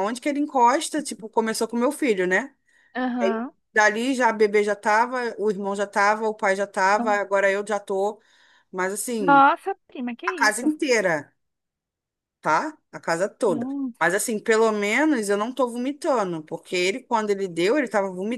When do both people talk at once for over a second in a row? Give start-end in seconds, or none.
none